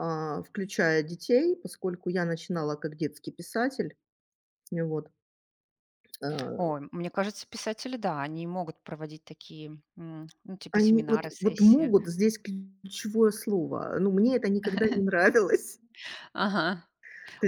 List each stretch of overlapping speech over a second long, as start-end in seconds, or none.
10.7-11.9